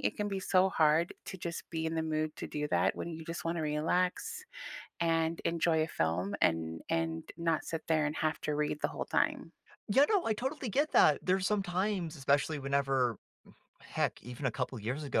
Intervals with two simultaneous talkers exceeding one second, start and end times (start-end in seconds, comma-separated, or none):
none